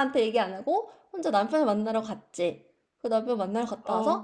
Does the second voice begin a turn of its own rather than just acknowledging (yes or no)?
no